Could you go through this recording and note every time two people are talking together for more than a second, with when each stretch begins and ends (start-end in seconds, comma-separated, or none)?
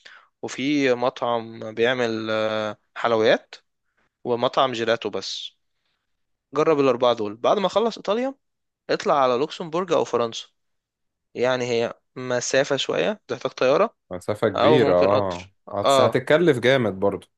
14.6-16.2